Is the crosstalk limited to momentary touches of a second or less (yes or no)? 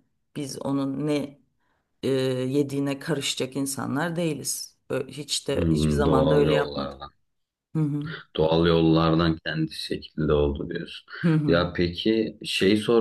no